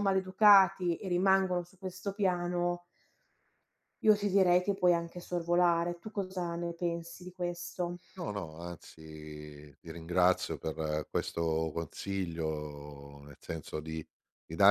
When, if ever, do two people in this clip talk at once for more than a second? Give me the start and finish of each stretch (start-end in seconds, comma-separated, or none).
none